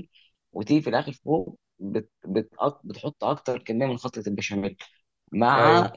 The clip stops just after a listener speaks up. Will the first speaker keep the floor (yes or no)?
yes